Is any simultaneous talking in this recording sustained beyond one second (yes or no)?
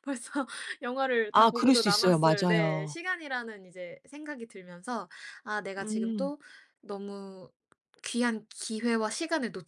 yes